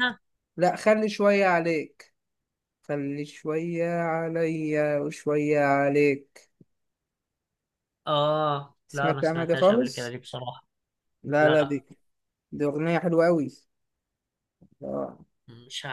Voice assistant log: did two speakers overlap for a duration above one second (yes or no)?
yes